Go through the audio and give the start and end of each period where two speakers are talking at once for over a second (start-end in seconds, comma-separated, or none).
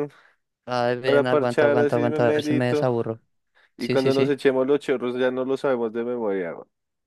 1.0-2.9